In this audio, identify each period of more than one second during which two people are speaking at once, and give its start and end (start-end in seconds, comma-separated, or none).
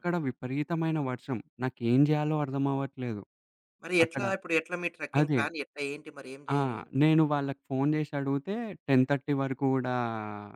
none